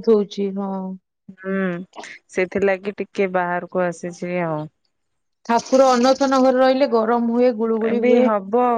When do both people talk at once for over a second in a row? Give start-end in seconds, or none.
none